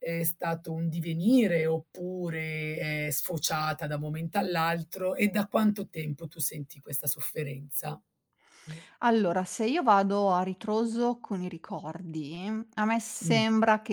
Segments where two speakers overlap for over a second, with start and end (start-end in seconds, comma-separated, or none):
none